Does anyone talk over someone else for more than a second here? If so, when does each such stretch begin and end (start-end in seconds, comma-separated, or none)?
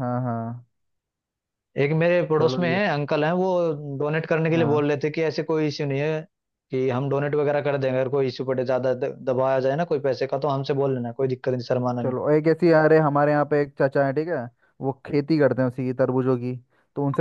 none